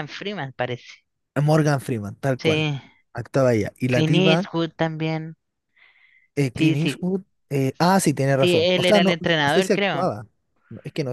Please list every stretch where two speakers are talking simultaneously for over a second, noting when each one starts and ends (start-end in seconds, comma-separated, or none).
8.4-10.1